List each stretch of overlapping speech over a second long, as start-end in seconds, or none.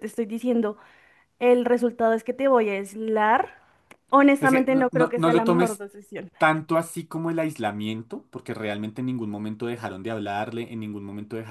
4.4-5.8